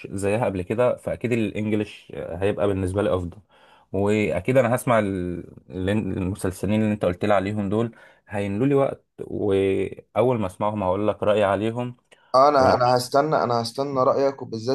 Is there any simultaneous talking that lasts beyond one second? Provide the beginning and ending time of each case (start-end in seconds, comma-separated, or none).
none